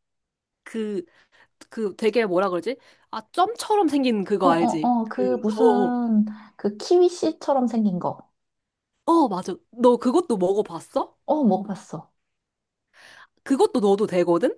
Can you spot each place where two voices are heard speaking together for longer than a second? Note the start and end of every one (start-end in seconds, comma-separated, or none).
4.4-5.9